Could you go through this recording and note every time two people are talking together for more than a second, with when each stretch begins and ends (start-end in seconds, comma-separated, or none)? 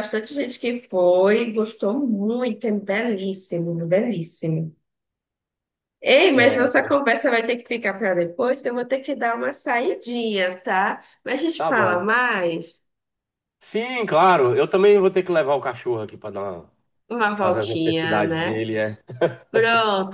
17.4-18.7